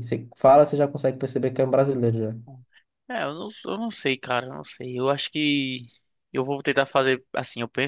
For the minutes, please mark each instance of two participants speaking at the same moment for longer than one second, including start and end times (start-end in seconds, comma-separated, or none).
none